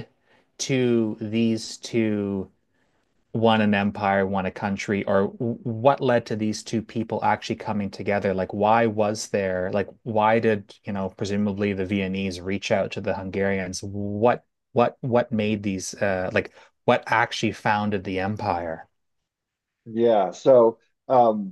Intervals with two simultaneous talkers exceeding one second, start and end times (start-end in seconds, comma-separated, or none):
none